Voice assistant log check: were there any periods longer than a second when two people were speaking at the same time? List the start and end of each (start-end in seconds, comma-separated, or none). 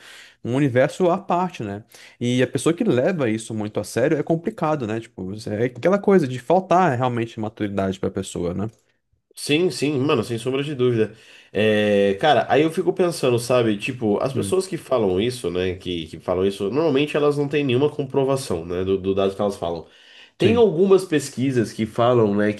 none